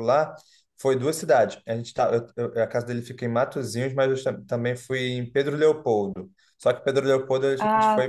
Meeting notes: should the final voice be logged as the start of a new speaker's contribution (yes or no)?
no